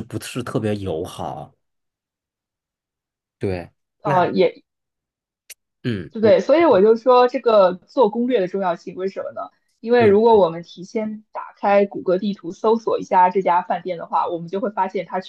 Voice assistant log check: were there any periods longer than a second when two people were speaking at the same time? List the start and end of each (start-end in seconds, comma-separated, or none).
none